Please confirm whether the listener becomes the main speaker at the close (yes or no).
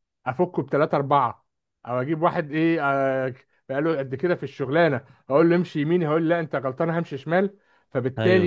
no